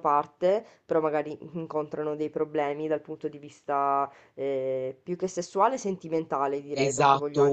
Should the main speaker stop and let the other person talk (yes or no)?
yes